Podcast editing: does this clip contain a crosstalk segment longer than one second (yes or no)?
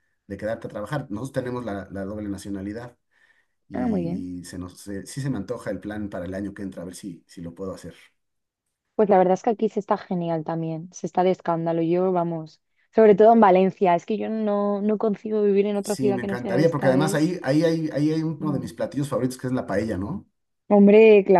yes